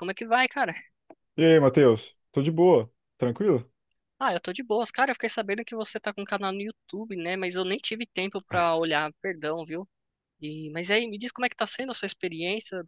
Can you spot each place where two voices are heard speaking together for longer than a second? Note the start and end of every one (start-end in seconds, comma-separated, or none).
none